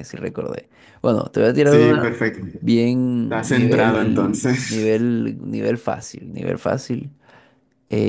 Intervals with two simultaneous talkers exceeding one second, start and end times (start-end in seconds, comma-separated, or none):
3.2-5.1